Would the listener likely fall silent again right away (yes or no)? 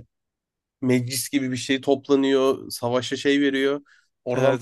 yes